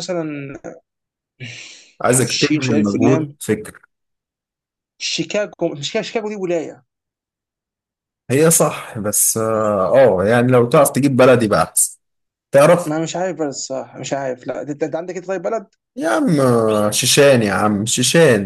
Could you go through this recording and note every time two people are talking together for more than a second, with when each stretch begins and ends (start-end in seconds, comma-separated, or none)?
2.1-3.4